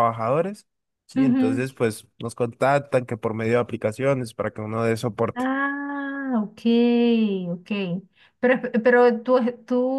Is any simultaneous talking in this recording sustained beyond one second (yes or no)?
no